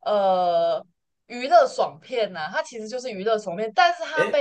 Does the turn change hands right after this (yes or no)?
no